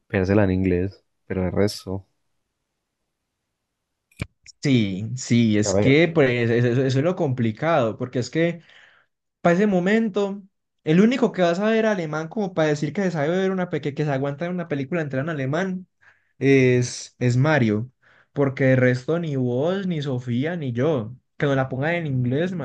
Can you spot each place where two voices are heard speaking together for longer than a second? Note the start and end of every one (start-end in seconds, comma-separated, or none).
none